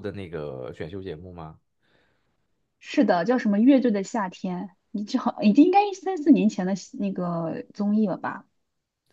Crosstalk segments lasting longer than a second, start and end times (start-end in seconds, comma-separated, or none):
none